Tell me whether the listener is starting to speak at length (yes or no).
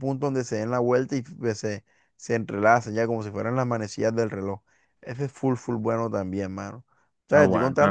no